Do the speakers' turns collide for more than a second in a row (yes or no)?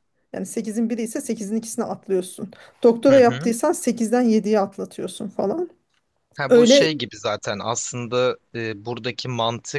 no